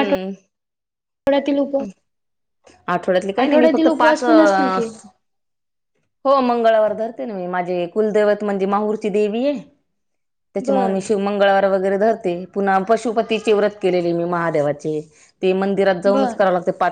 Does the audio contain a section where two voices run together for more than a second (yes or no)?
yes